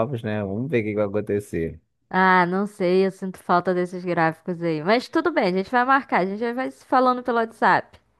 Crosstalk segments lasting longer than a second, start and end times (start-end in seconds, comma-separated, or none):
none